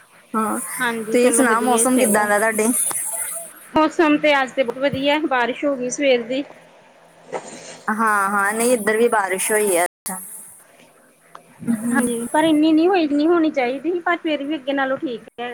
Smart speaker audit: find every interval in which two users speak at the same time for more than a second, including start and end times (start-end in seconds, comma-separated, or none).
0.8-2.3